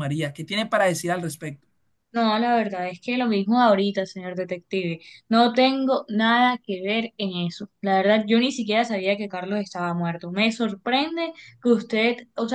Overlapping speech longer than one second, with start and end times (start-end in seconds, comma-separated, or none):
none